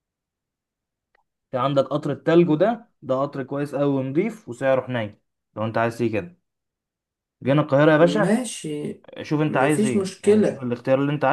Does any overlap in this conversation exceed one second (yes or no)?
yes